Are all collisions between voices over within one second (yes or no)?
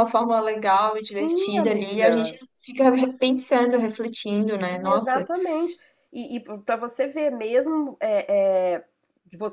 no